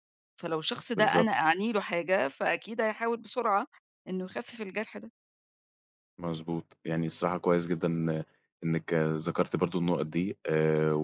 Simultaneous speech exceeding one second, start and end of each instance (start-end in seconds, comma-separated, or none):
none